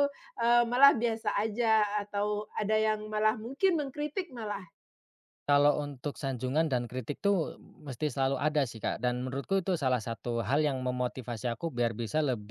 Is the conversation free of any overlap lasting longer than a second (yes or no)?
yes